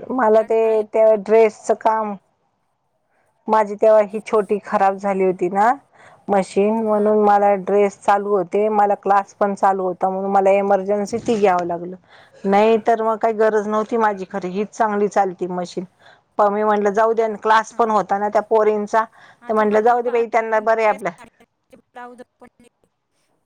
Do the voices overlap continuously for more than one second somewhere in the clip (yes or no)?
yes